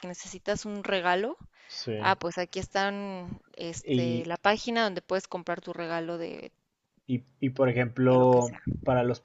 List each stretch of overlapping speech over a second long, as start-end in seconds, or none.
none